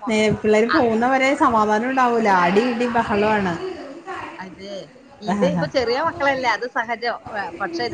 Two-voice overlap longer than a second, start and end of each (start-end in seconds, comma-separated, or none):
none